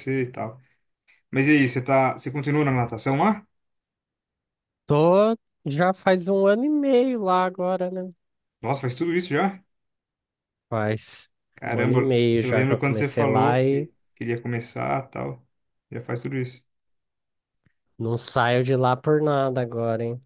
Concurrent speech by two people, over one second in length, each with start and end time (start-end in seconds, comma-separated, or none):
11.6-13.9